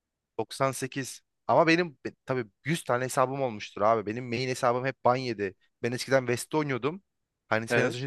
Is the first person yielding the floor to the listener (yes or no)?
no